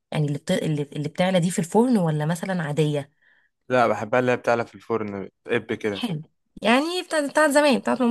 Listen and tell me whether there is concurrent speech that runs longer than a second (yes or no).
no